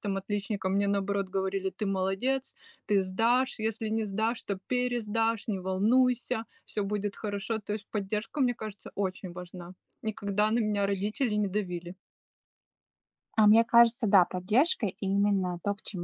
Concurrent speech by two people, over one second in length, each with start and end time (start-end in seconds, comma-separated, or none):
none